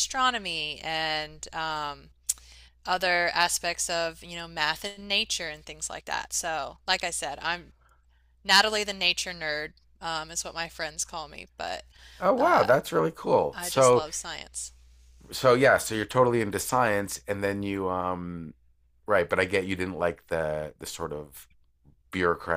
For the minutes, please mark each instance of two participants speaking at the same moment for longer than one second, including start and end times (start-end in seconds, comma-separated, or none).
none